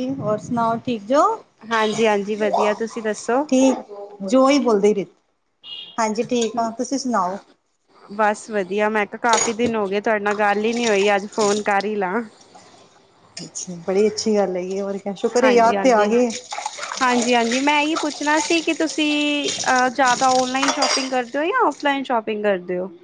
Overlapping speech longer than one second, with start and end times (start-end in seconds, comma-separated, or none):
none